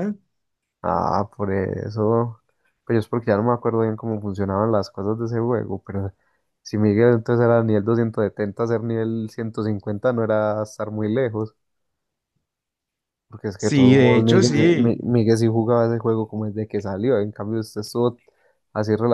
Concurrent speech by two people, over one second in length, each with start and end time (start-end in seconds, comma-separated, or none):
13.6-15.0